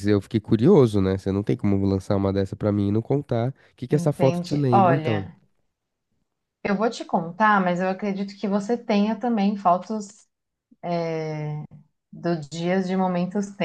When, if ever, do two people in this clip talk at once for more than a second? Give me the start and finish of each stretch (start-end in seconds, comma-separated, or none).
3.9-5.3